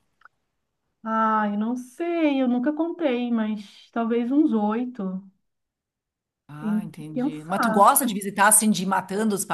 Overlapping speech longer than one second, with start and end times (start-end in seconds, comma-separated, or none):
6.6-7.9